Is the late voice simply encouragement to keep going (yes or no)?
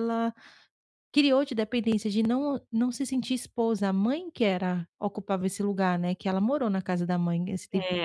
no